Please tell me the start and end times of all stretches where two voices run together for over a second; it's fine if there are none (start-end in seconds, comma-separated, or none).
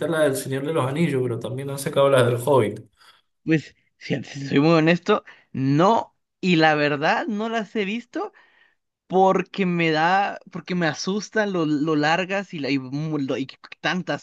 none